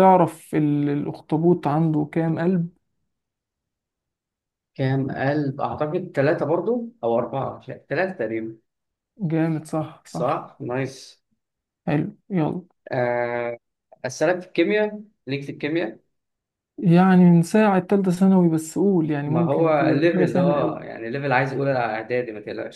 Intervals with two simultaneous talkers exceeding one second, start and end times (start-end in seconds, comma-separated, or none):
19.3-20.9